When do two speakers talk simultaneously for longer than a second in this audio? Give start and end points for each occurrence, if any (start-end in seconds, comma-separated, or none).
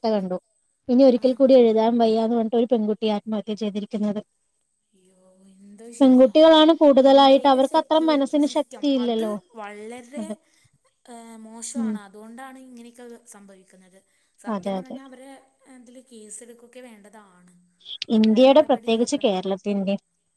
7.1-9.3